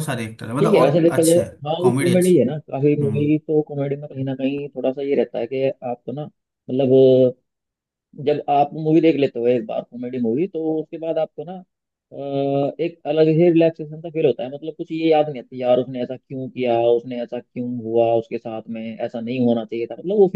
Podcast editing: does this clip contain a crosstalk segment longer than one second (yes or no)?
yes